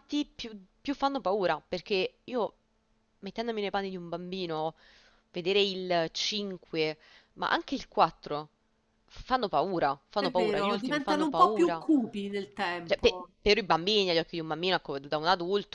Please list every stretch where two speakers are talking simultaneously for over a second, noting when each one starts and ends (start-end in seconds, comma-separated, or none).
10.2-11.8